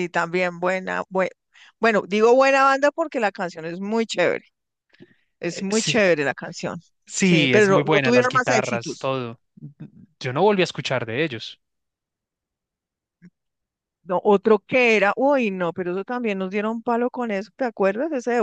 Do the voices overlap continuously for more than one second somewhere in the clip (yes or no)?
yes